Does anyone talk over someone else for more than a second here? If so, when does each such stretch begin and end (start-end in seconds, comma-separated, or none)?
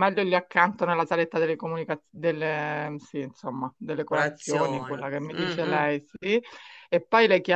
4.1-5.8